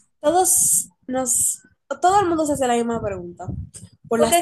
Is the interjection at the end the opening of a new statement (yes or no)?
yes